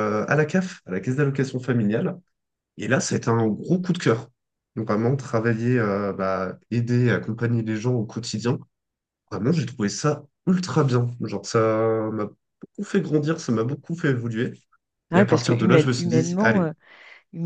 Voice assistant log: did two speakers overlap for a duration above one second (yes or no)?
yes